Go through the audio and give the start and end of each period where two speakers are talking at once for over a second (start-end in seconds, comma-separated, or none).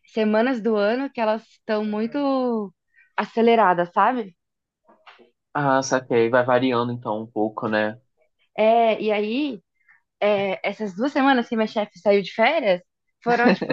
none